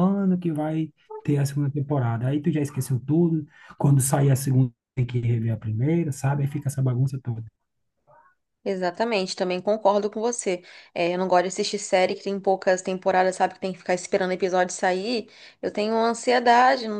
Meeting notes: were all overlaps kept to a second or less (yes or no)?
yes